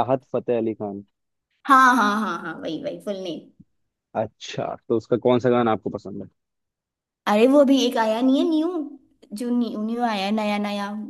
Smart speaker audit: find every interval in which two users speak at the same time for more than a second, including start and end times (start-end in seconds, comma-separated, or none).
none